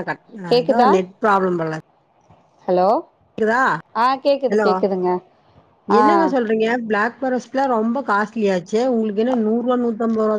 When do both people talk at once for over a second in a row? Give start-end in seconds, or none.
none